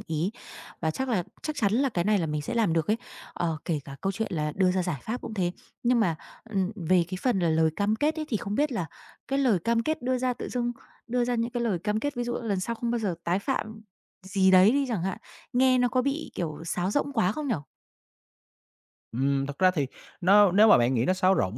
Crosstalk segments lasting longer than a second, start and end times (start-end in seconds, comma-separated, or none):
none